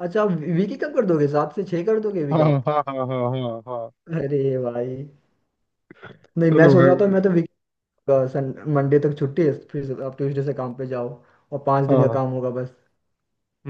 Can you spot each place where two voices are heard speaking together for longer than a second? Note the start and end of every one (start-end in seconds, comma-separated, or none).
none